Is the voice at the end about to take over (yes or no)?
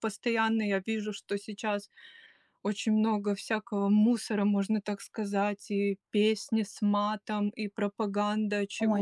yes